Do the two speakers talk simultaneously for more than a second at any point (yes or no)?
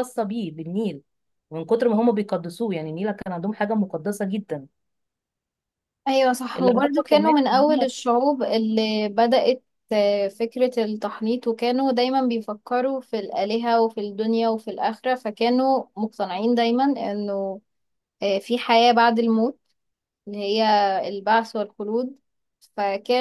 yes